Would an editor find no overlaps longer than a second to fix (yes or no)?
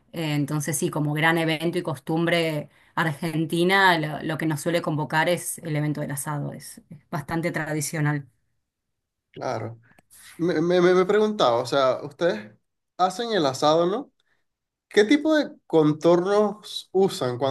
yes